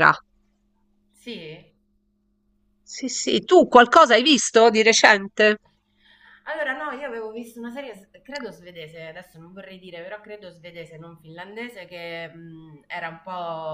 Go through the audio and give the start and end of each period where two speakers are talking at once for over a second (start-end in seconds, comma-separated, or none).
none